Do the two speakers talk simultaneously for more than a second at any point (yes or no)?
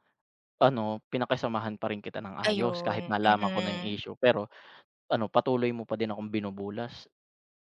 yes